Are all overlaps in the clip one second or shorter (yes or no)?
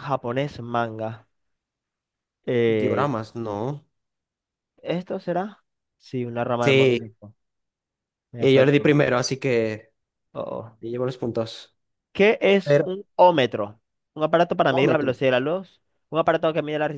yes